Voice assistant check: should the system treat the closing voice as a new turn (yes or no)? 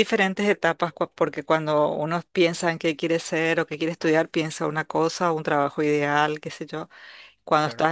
no